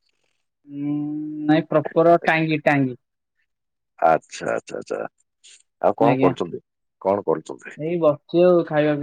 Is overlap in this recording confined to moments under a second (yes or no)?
yes